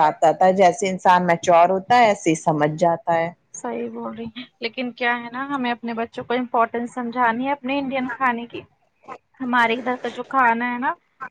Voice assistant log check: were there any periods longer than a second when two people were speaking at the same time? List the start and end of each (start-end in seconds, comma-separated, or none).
none